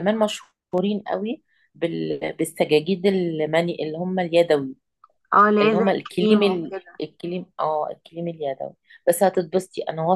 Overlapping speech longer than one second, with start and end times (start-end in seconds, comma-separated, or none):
5.6-7.0